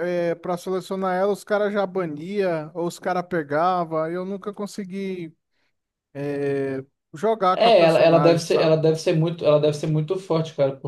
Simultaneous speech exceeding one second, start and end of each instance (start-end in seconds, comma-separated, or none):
7.5-8.8